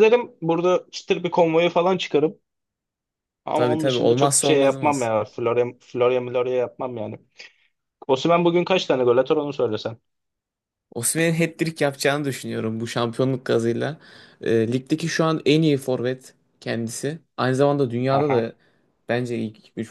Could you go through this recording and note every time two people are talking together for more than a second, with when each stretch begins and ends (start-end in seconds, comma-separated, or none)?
3.5-5.1